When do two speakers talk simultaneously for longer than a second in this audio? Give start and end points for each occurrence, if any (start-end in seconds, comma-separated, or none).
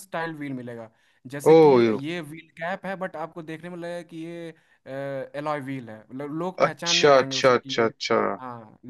6.7-7.9